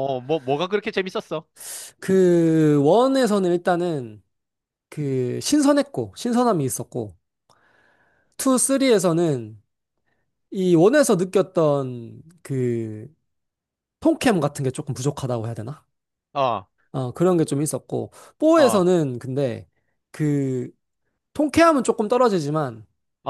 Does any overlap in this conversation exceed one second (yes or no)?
no